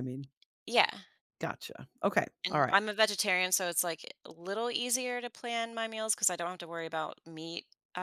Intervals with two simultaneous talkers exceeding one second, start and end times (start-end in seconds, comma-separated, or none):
none